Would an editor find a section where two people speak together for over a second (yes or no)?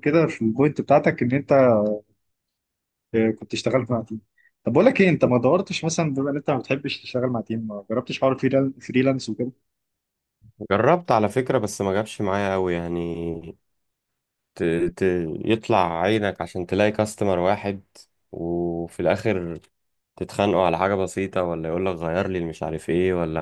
no